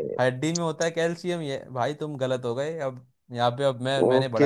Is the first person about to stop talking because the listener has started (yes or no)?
yes